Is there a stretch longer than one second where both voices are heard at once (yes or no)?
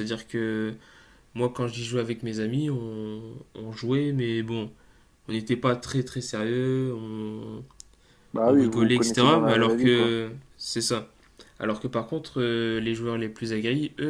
yes